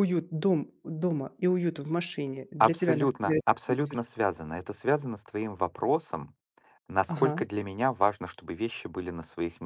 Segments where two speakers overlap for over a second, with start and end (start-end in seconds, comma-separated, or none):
2.6-4.0